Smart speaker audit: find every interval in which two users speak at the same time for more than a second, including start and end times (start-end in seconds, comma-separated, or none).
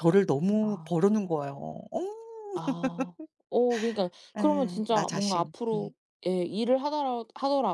4.4-5.9